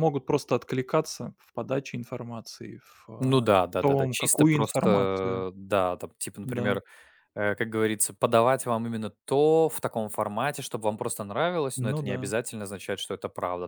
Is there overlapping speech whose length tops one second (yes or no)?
yes